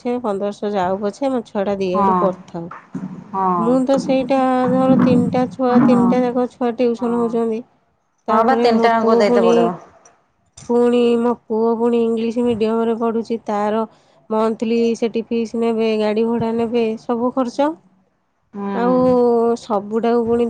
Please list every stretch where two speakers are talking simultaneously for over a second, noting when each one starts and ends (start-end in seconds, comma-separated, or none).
none